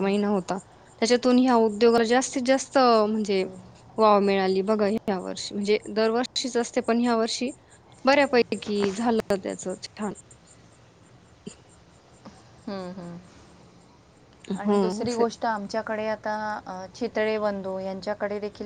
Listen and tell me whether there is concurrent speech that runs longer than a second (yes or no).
no